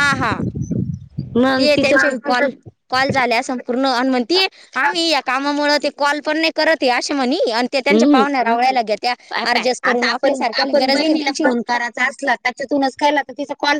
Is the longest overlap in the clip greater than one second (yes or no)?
yes